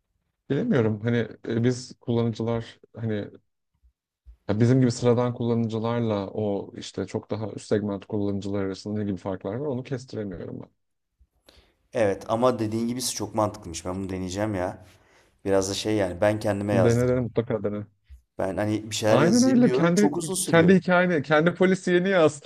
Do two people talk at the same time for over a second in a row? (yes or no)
yes